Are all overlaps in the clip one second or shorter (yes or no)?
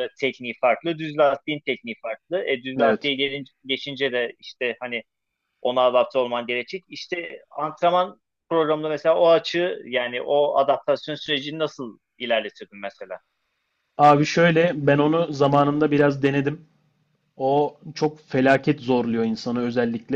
yes